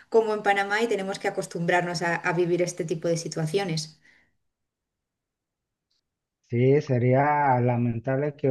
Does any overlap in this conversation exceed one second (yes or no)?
no